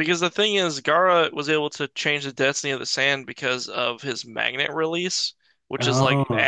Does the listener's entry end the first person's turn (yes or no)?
no